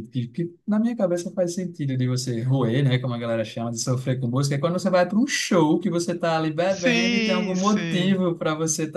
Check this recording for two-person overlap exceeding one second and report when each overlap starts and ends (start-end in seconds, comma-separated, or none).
6.7-8.2